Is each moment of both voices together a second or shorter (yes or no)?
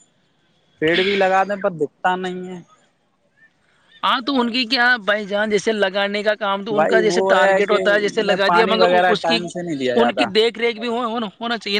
no